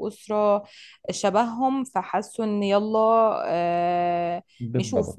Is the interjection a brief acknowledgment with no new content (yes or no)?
yes